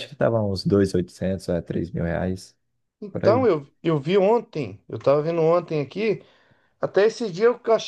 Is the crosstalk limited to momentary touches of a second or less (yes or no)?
yes